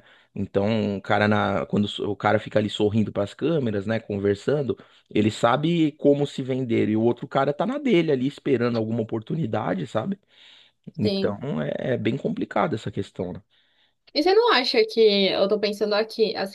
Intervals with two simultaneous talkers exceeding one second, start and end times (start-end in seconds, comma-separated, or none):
none